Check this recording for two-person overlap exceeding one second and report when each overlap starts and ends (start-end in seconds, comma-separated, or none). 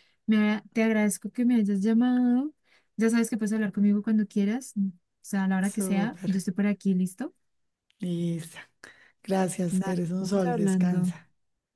9.7-11.1